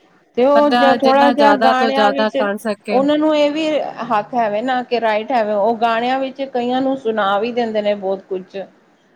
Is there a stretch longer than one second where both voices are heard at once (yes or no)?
yes